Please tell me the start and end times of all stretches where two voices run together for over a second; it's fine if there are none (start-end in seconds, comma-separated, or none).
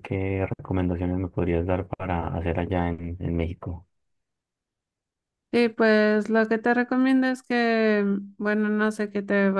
none